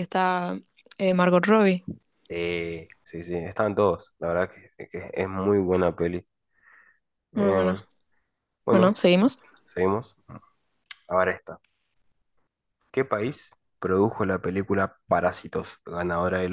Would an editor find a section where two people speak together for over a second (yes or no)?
no